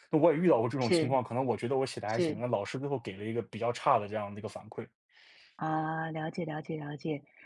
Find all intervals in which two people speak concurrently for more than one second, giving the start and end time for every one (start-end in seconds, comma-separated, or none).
none